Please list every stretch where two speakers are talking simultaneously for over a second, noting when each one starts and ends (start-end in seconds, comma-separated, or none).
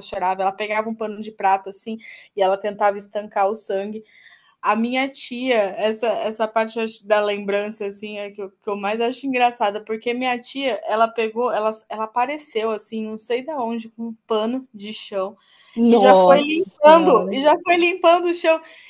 15.9-17.4